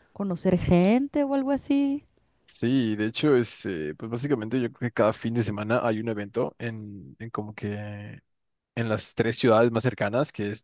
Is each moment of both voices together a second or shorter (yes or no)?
yes